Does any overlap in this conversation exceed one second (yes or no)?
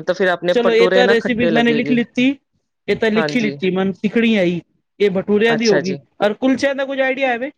yes